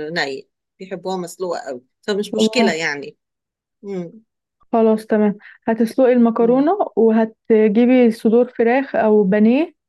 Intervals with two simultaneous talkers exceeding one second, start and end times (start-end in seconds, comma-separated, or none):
none